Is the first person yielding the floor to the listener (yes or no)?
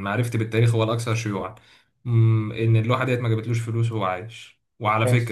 no